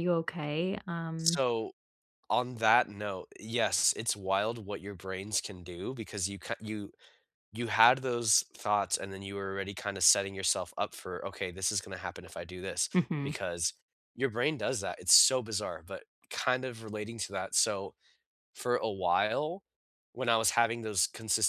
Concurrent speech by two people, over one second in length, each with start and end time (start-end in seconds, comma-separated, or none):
none